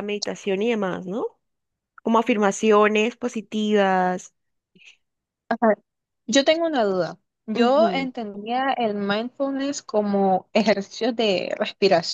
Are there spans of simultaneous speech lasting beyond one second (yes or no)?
no